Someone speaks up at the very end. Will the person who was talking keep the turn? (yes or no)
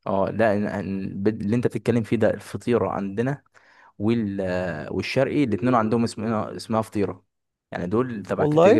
yes